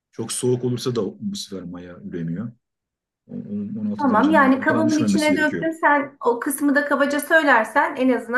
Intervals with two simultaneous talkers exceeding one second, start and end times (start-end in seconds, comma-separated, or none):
4.0-5.7